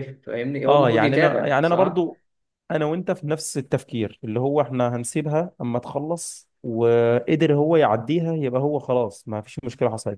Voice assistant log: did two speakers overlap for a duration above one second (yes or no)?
yes